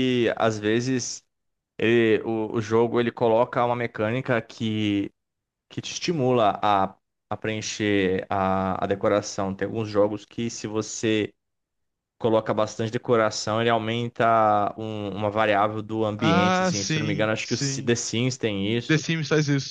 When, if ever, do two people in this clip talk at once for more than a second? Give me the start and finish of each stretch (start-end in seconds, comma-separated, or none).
16.2-17.9